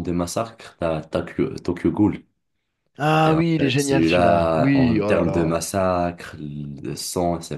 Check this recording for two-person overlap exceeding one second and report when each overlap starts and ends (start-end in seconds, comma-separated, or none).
3.2-5.5